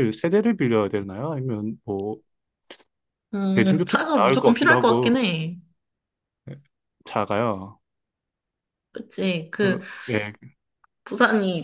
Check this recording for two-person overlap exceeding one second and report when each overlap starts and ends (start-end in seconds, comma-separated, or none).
3.5-5.2